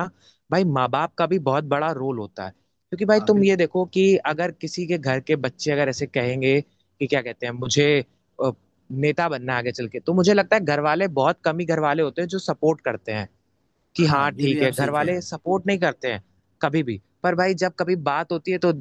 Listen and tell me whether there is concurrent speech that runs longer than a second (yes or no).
yes